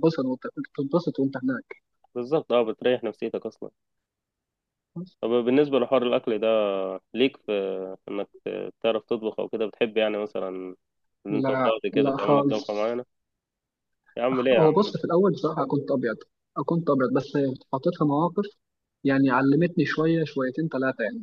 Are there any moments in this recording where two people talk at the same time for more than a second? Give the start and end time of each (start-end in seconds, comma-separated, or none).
11.3-13.0